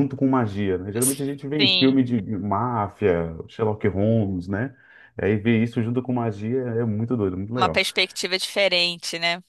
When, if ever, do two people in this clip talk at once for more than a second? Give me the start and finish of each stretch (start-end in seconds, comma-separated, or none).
none